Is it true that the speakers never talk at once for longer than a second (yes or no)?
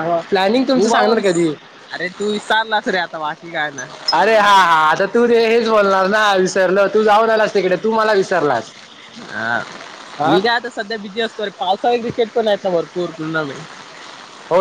yes